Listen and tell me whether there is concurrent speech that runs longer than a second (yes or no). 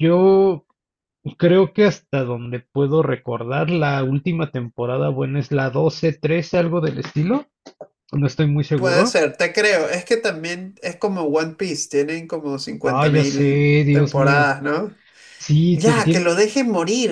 yes